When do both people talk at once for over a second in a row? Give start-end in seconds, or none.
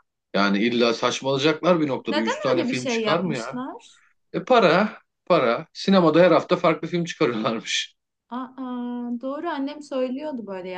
2.1-3.6